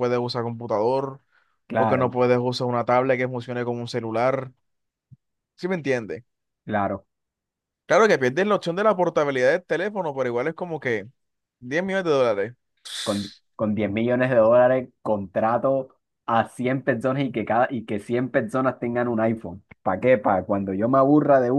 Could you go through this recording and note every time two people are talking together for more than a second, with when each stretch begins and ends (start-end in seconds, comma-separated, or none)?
none